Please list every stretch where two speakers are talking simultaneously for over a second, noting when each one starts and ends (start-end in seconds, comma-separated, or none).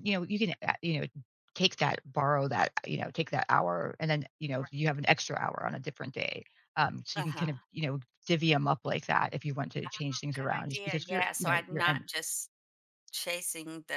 10.3-12.1